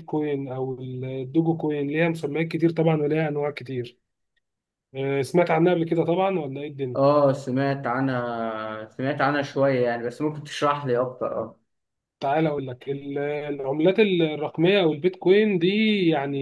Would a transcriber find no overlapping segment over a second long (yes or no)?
yes